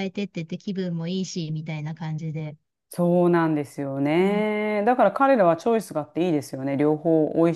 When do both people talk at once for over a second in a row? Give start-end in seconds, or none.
none